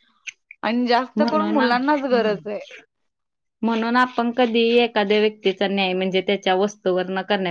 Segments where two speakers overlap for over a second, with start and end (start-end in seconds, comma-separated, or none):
none